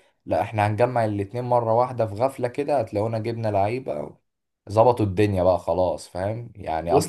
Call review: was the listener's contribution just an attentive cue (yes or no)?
yes